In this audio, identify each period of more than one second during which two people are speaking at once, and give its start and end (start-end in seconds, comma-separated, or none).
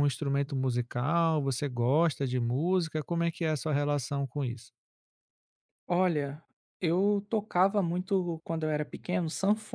none